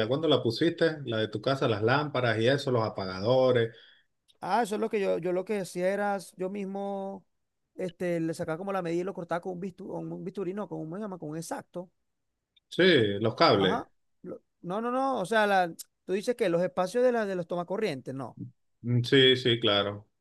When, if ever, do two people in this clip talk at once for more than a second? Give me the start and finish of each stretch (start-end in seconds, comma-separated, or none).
none